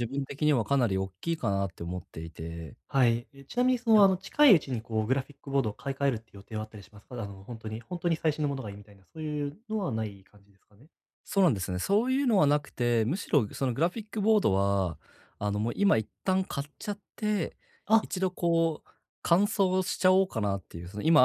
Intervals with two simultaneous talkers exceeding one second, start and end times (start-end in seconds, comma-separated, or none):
none